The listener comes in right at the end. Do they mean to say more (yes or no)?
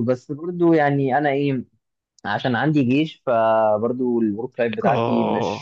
no